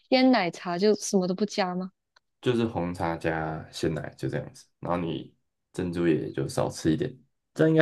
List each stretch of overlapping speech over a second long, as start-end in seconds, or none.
none